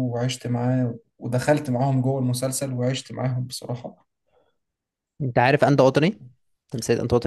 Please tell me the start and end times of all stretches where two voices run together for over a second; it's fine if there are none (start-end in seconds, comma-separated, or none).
none